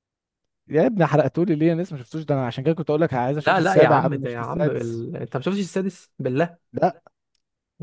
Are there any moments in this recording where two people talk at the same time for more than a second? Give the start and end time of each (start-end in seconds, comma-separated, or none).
3.4-5.0